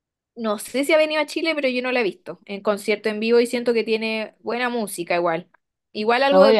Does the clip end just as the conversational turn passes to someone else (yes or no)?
yes